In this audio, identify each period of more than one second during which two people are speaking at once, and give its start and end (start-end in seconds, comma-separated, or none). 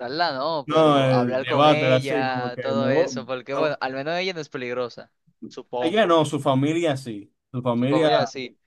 0.7-3.8